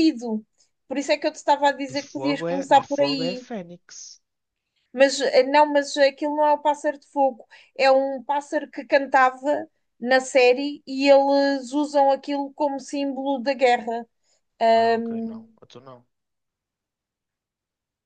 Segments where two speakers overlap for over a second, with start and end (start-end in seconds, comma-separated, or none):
1.9-3.5